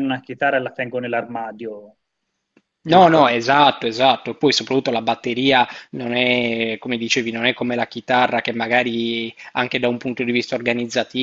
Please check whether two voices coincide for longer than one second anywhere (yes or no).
no